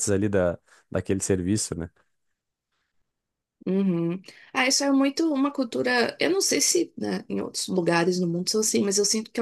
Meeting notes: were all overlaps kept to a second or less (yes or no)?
yes